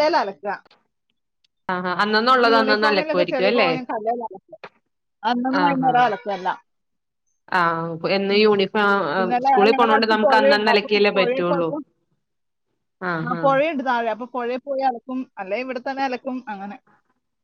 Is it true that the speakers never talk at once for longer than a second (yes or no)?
no